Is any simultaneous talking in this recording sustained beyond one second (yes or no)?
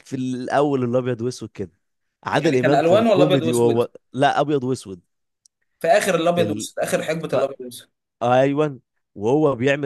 yes